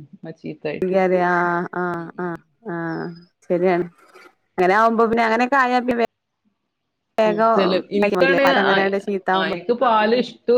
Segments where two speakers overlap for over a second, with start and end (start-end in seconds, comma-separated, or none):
none